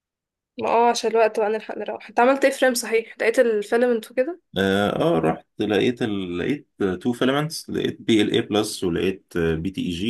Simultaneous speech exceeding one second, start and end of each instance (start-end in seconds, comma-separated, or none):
none